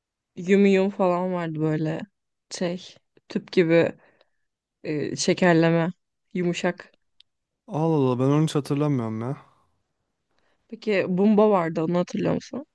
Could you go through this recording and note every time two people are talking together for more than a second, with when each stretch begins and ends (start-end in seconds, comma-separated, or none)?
none